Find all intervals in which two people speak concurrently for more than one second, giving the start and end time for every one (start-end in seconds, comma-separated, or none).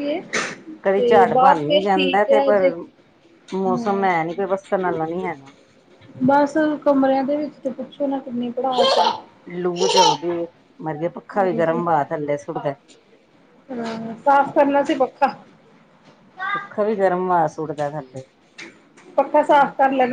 none